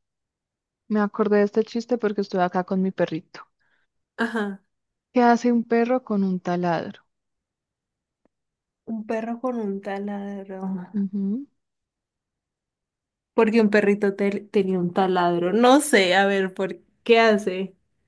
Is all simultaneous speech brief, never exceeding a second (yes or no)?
yes